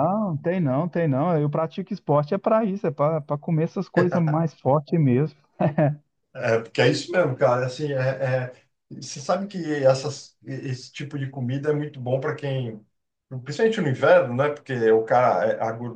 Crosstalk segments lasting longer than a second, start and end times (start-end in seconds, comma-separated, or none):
none